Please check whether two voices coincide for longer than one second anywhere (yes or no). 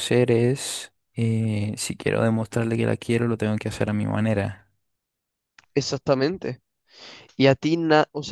no